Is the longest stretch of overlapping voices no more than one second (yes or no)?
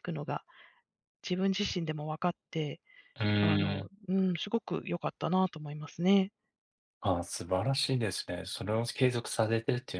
yes